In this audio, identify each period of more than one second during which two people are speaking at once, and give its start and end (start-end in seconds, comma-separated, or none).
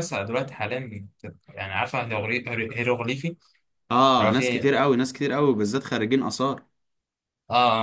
none